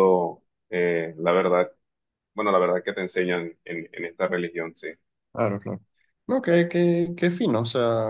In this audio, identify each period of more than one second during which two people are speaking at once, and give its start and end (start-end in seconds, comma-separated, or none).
none